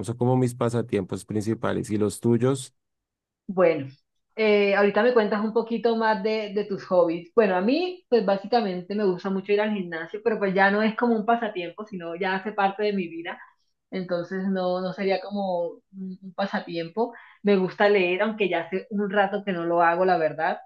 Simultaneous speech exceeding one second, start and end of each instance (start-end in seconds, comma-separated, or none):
none